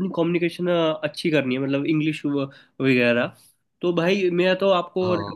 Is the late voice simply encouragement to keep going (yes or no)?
yes